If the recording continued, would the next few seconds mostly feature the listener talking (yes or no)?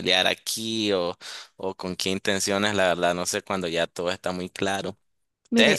no